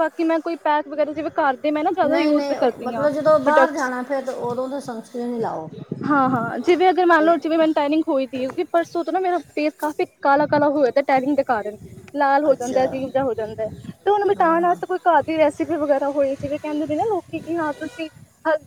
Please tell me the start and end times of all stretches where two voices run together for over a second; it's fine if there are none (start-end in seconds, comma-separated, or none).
2.0-3.9